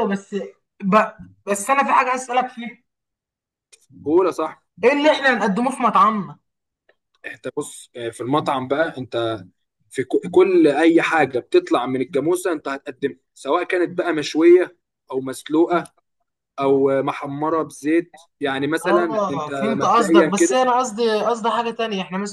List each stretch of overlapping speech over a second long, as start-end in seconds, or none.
18.9-20.6